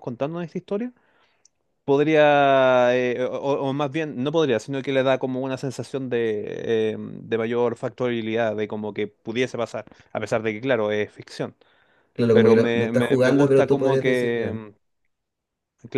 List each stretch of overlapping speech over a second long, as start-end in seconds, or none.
12.3-14.6